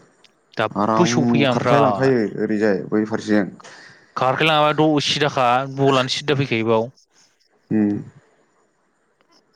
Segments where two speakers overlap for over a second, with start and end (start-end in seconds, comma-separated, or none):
0.8-2.1